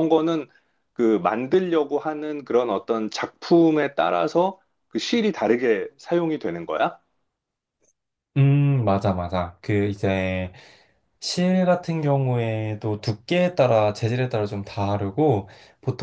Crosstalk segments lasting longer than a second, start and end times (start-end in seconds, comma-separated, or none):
none